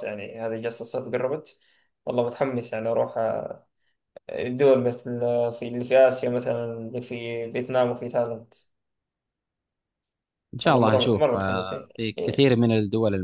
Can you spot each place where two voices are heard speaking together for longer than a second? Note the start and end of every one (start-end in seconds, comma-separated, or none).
10.6-12.5